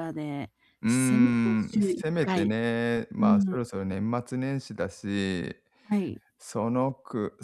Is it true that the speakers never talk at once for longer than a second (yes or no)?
no